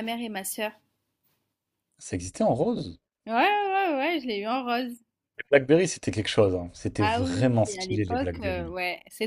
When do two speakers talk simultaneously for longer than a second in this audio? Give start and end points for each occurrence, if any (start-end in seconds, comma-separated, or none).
7.0-8.7